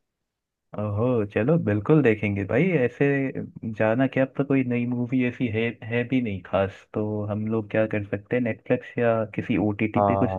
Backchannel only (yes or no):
no